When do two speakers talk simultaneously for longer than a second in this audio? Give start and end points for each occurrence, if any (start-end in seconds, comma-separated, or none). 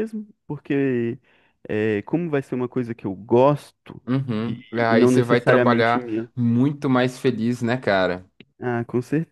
4.5-6.3